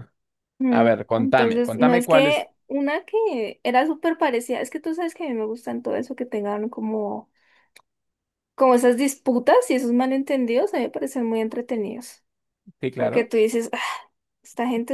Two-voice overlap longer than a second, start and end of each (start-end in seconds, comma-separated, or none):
0.7-2.5